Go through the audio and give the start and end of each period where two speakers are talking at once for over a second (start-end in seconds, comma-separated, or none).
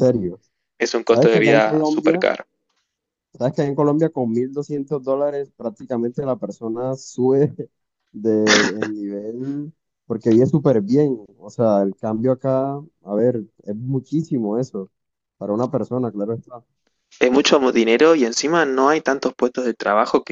1.0-2.3